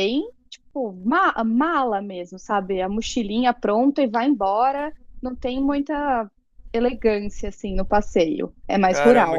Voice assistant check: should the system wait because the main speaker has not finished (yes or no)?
no